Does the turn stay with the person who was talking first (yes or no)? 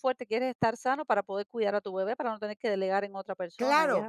no